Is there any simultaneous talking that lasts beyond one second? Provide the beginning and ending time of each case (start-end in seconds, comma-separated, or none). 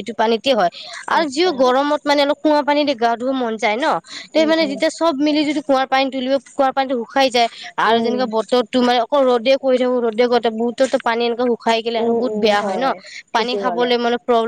none